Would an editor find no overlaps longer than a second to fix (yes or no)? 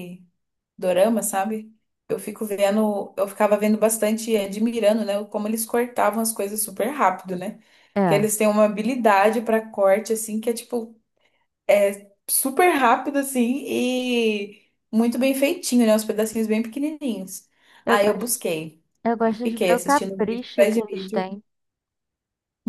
no